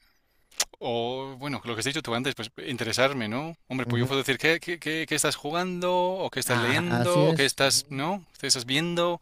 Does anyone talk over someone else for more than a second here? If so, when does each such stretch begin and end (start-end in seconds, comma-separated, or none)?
6.5-8.0